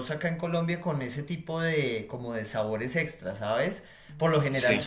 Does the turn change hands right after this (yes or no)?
no